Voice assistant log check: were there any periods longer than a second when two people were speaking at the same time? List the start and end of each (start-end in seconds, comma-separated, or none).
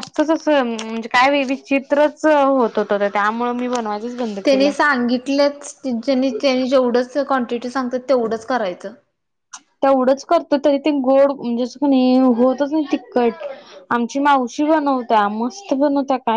none